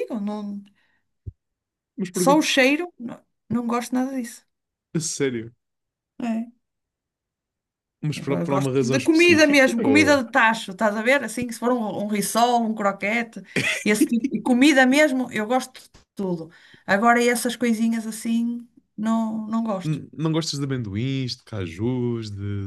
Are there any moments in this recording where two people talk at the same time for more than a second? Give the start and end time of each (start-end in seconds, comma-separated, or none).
8.1-10.2